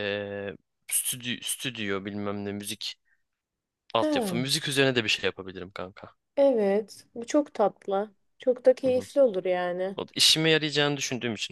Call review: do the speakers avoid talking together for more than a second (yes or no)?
yes